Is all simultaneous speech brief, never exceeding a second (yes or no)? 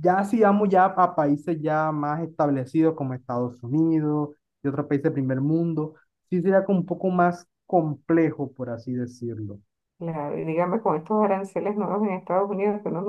yes